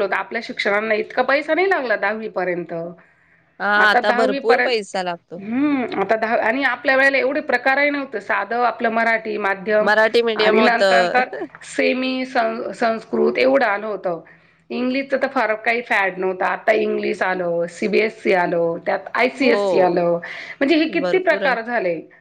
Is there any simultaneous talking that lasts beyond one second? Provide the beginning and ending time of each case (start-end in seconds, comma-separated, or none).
3.6-5.0, 9.9-11.2